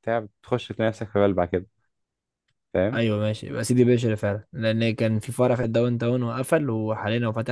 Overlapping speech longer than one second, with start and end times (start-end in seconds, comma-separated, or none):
none